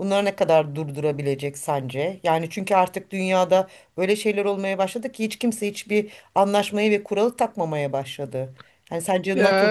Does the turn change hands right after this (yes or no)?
yes